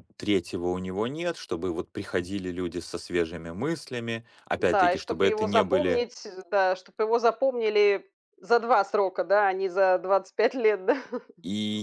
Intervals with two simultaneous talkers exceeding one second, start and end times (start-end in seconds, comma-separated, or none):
4.6-6.0